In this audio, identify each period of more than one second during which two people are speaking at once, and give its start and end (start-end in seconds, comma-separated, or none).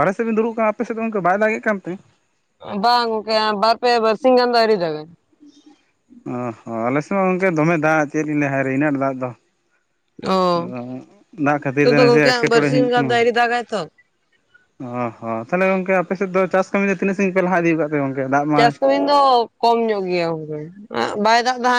11.7-13.1